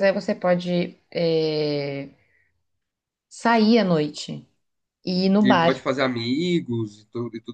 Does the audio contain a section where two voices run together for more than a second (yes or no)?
no